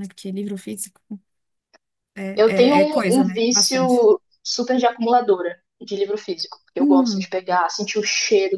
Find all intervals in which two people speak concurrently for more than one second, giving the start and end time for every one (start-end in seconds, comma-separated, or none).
2.3-4.1